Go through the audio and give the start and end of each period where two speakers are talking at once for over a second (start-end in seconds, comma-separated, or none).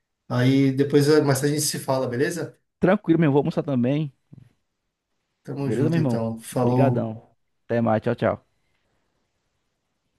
5.6-7.1